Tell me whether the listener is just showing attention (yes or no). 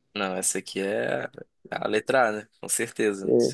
no